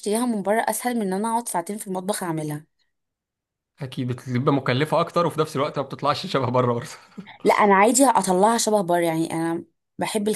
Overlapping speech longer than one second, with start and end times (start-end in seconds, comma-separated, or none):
none